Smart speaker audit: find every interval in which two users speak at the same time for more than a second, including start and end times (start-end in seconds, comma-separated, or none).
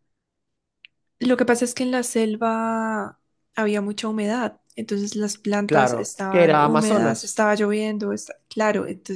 5.7-7.4